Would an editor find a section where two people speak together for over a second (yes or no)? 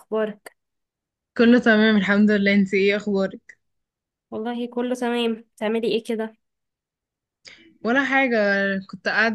no